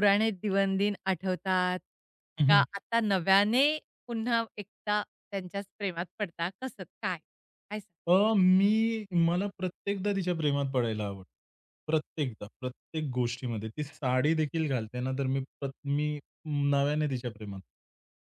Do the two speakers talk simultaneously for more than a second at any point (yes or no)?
no